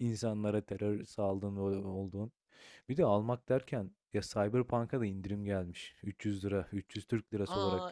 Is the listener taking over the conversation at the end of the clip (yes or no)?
yes